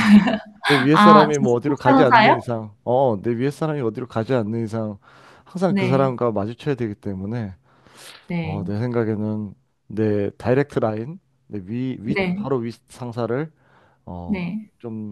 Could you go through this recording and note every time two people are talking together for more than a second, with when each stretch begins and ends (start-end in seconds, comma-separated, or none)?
0.9-2.4